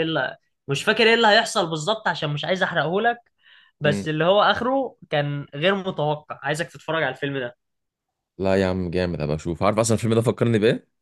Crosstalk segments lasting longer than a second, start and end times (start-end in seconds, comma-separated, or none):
none